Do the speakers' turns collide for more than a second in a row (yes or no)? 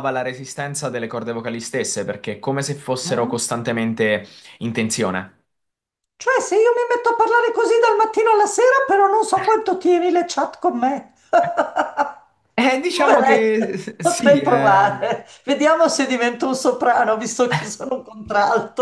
yes